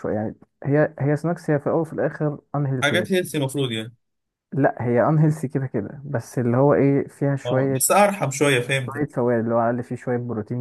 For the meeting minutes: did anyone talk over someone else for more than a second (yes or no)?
no